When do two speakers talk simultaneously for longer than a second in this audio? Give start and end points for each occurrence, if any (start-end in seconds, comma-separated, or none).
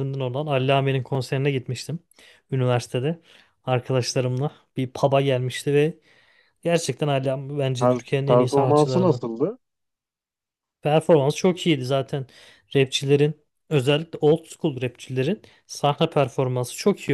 7.8-9.2